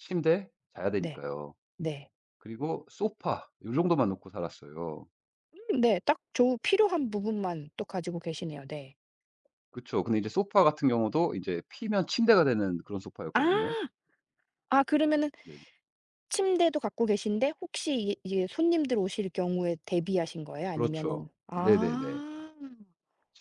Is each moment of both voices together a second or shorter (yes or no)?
no